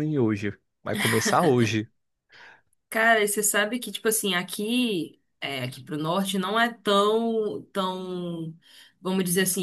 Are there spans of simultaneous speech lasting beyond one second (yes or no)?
no